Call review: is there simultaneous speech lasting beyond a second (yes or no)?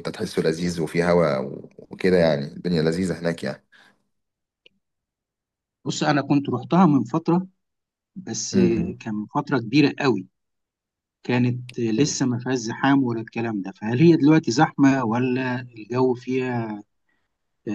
no